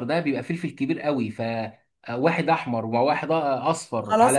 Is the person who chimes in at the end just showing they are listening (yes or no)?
no